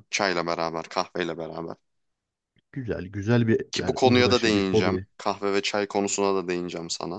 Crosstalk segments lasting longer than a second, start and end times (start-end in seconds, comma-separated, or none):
3.7-5.1